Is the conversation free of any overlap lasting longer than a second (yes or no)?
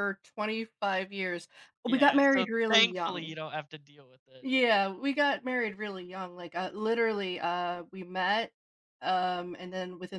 no